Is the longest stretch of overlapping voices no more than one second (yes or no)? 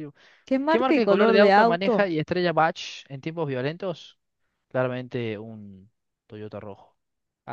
no